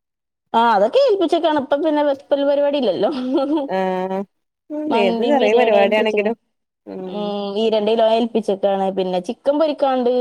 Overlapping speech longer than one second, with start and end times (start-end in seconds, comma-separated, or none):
4.9-6.3